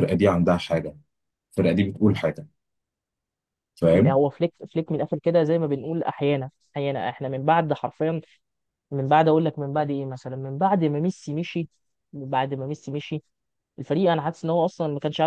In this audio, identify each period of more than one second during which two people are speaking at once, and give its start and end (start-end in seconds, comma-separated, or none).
none